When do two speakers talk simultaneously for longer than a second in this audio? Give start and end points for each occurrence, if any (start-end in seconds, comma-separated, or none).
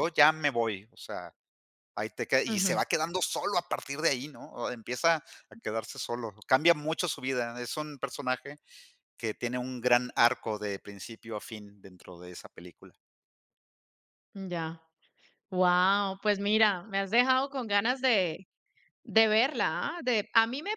none